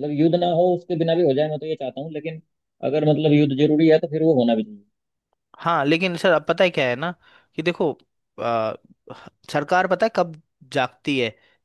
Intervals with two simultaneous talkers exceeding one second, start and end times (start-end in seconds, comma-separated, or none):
none